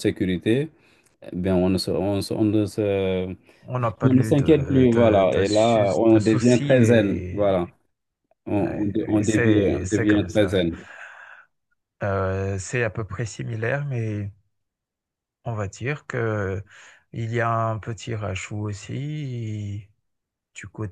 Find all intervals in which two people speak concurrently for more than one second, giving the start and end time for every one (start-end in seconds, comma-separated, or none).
4.0-7.5, 8.6-10.6